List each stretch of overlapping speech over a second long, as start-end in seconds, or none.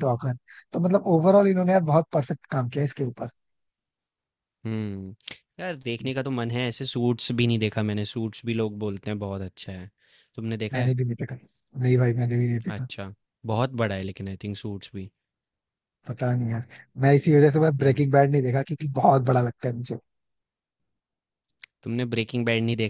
none